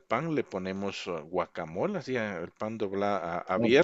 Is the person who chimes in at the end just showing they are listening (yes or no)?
yes